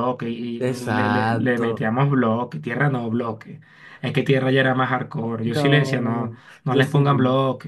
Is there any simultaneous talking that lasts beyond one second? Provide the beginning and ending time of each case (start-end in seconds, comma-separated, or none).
0.6-1.9, 5.4-7.0